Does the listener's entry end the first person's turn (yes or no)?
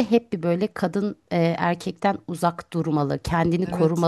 no